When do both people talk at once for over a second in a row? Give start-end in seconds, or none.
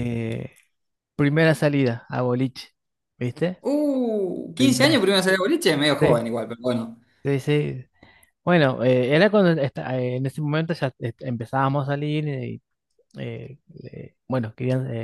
none